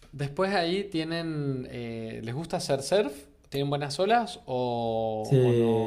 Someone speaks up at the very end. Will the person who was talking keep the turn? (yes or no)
no